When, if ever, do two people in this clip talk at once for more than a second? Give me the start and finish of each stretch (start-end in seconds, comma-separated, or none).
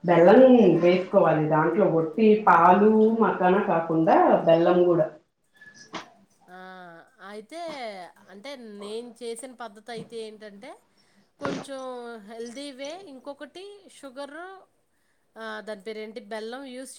none